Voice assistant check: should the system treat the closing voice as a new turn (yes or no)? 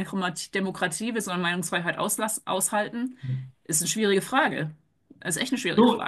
yes